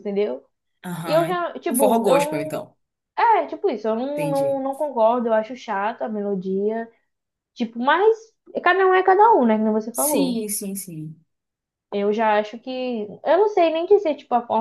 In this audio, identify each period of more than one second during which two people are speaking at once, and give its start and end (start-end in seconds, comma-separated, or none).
1.0-2.5